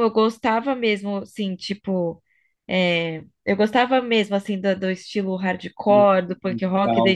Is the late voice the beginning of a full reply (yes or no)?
no